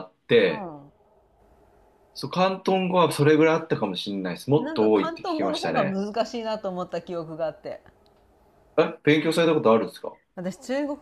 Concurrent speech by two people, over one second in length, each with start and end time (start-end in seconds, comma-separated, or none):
4.6-6.0